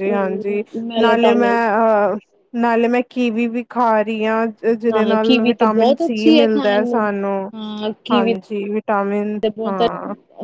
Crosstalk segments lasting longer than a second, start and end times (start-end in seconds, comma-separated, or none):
4.9-7.1